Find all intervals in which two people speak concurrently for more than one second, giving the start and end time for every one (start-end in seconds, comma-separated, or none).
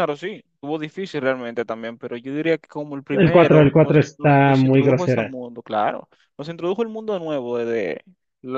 3.1-5.3